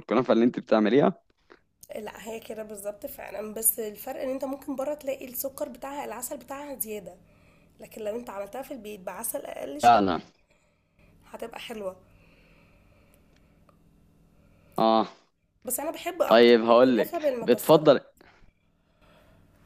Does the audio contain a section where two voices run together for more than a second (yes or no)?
yes